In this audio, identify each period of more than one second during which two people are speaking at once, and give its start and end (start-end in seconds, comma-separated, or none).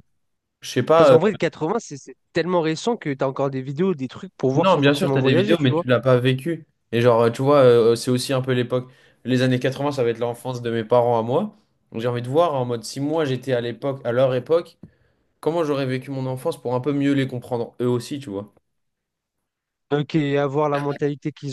4.5-5.8